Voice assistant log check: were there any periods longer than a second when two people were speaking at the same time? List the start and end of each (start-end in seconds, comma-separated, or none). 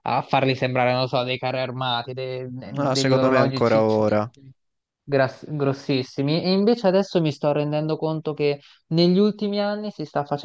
2.6-4.3